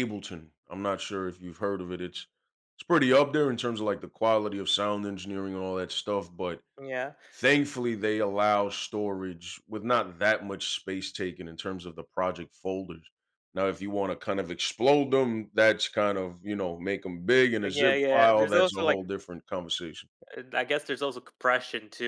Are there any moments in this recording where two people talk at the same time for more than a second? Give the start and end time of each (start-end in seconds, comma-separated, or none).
17.7-19.0